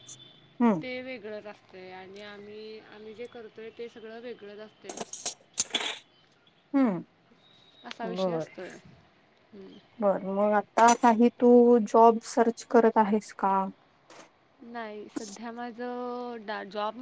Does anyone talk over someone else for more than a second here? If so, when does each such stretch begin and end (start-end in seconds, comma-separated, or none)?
none